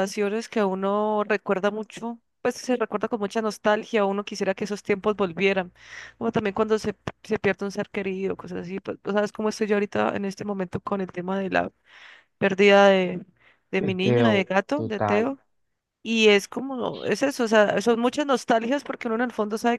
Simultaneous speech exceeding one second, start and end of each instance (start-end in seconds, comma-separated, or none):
13.8-15.3